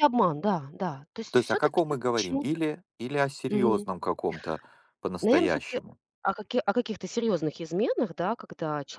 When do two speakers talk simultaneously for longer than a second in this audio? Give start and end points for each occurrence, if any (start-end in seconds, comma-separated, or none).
1.3-2.6